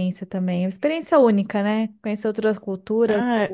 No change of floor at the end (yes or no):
no